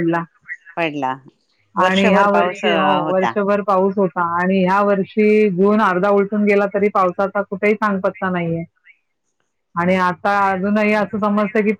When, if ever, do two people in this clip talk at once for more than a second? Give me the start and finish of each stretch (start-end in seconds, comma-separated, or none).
1.9-3.3